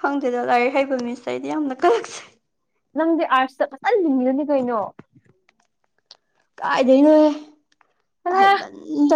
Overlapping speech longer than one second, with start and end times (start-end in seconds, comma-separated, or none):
none